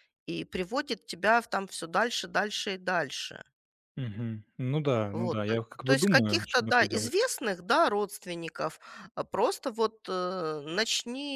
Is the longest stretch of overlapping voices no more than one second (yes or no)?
no